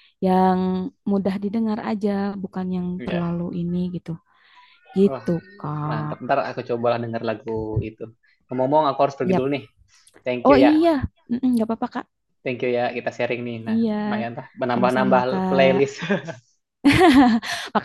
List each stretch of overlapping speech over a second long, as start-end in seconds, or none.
14.7-16.0